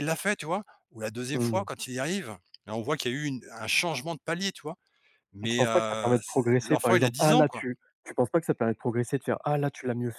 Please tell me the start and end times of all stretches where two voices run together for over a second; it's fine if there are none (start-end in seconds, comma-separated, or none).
5.4-7.7